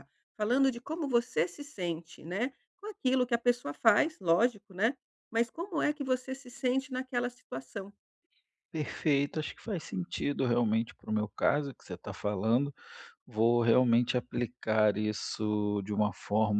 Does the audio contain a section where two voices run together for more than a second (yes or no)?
no